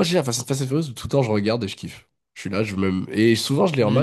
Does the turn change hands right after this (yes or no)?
yes